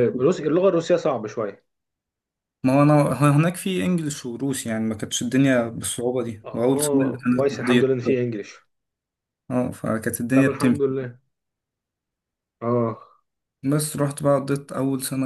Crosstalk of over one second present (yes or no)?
yes